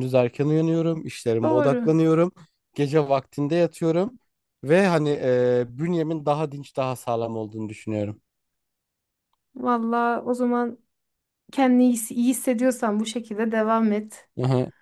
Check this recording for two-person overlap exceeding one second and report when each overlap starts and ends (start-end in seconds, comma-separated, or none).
none